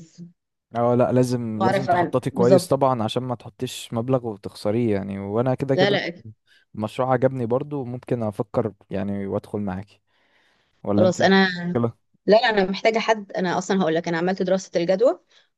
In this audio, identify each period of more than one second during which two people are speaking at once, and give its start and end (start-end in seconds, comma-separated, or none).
1.5-2.8